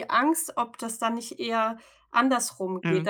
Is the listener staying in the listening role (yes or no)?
yes